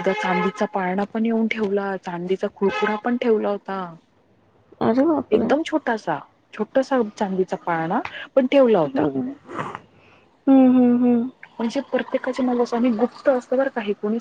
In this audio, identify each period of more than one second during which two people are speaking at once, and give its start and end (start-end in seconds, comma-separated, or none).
none